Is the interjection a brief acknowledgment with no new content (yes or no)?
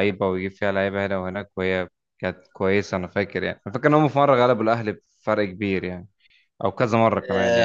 no